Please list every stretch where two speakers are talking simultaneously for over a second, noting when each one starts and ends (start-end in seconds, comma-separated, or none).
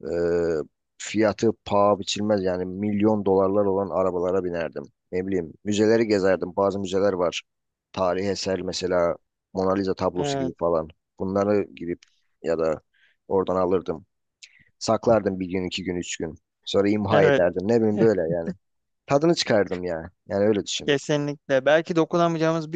none